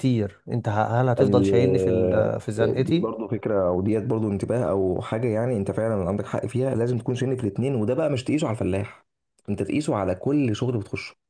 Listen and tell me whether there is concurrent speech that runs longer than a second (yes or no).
no